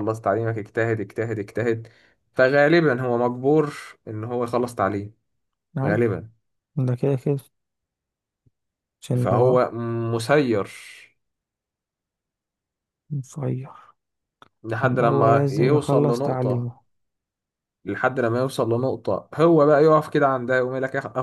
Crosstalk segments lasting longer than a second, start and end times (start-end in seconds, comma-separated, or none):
14.8-16.7